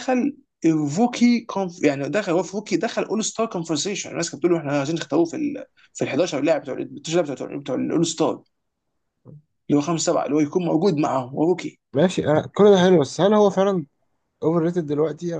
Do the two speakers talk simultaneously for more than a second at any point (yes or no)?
no